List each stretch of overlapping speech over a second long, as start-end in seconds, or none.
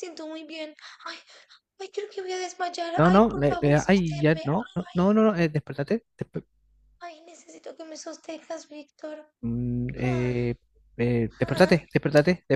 3.0-4.4